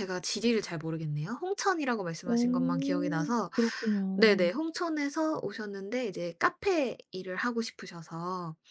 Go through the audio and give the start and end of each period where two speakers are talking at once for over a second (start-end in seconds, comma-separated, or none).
2.2-3.5